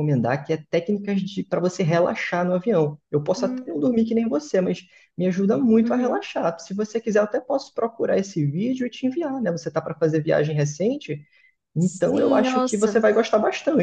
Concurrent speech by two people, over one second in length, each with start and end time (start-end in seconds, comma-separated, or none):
11.8-13.0